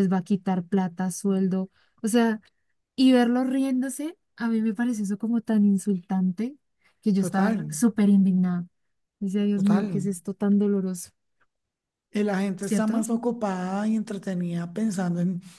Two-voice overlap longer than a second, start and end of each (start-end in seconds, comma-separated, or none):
none